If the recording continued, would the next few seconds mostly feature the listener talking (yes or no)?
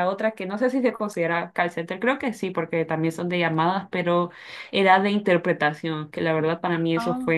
no